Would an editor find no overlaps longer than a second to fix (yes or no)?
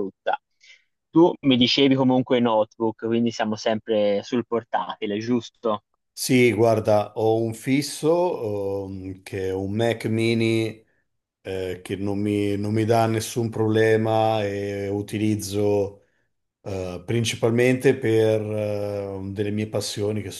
yes